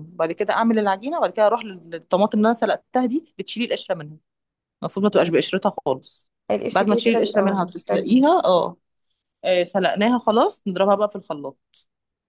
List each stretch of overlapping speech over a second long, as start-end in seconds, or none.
6.7-8.2